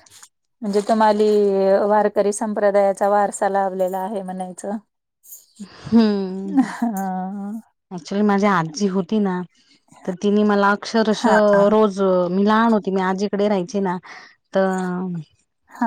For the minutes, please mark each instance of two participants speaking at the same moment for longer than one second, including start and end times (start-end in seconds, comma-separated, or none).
none